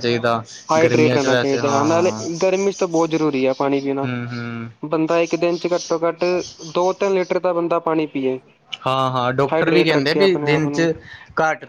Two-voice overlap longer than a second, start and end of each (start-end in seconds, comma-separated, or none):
0.8-2.2, 9.5-10.9